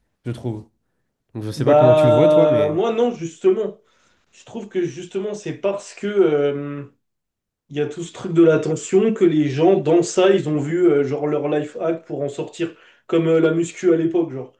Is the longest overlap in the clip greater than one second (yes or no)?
yes